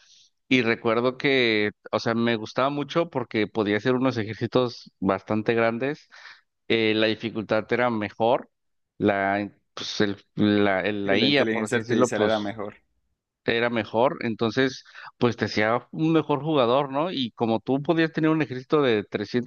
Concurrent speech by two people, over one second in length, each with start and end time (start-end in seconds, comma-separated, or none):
11.0-12.5